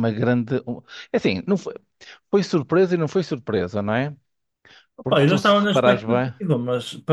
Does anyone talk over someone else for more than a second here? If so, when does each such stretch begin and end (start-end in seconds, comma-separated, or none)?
5.1-6.3